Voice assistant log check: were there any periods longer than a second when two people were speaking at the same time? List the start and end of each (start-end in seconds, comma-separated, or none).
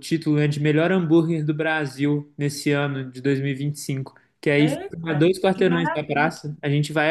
4.6-6.3